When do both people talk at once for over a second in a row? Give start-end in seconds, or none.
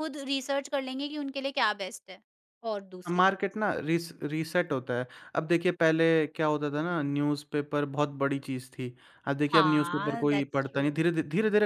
9.5-10.8